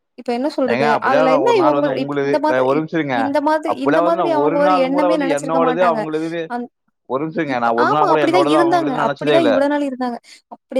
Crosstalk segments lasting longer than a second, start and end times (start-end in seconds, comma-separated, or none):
0.7-2.8, 3.7-6.0, 7.5-9.5